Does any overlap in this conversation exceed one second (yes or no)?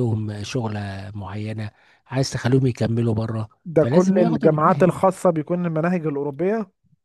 yes